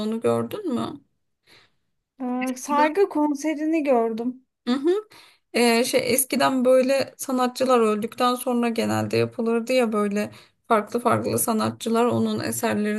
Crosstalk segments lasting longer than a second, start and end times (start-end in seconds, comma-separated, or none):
none